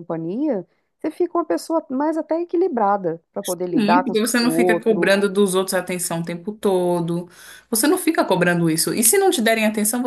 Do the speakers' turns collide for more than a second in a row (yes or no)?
yes